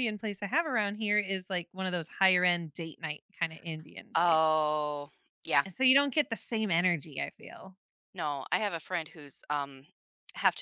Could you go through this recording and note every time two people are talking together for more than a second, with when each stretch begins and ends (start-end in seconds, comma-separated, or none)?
none